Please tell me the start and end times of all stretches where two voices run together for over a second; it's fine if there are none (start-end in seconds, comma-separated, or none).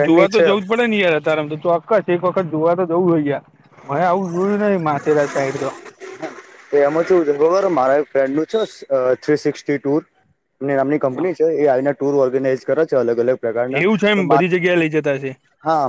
none